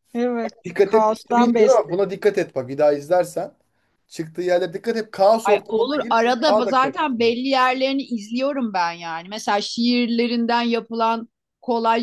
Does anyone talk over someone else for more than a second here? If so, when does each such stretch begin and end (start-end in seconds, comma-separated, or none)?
0.7-2.1, 5.4-7.4